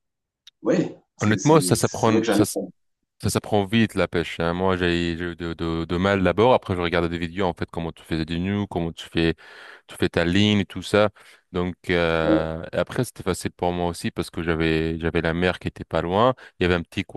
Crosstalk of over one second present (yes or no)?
yes